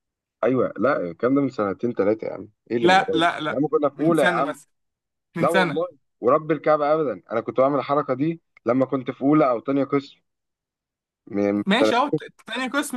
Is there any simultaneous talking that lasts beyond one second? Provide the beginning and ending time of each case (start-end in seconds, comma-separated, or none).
2.8-4.6